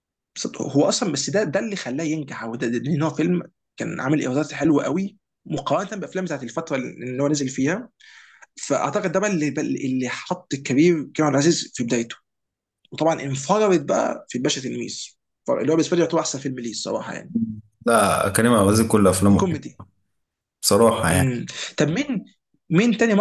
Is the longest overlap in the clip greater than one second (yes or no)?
no